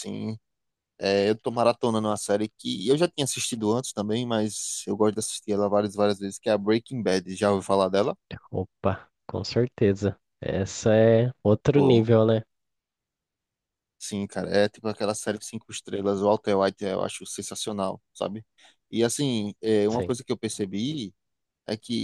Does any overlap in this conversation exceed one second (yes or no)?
no